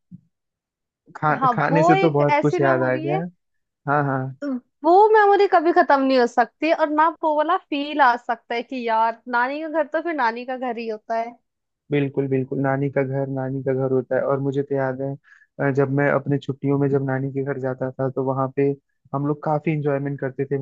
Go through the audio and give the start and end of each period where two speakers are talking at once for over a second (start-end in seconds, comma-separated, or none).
1.4-3.2